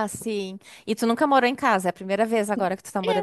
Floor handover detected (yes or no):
yes